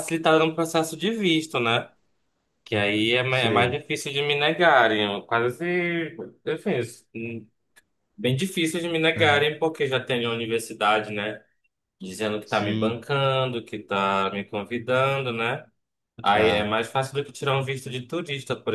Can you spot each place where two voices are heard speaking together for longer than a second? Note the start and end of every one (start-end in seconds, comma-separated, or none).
none